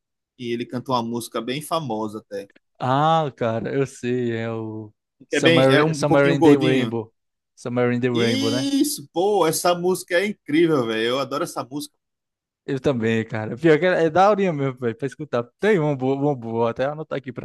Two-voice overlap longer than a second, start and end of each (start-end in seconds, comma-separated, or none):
5.3-6.9